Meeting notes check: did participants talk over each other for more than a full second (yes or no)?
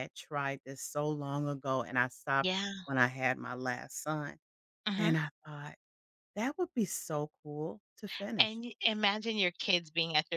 no